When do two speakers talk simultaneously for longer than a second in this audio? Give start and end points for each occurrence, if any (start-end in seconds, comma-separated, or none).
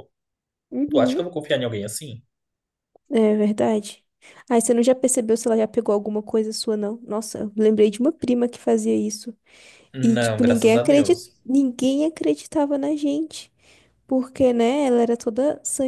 10.0-11.3